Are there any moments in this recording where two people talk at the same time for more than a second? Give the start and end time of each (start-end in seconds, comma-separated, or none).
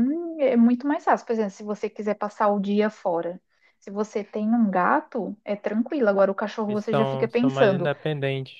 6.7-7.9